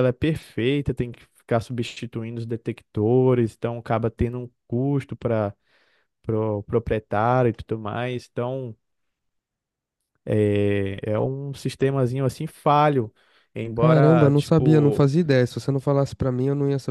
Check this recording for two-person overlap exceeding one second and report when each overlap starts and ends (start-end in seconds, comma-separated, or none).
13.7-15.1